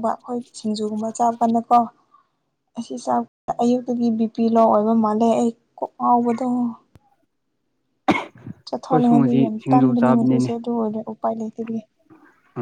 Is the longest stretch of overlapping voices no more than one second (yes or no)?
no